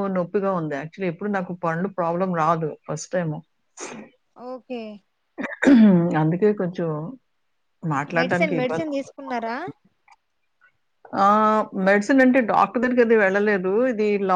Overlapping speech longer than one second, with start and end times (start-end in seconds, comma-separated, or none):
8.2-9.5